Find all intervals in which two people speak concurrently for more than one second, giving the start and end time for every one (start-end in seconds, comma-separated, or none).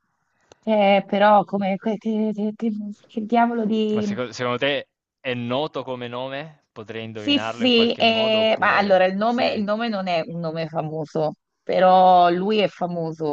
7.1-9.6